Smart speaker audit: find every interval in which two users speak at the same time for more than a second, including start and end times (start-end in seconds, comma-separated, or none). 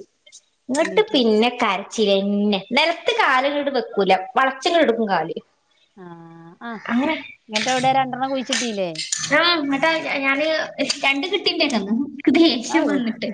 none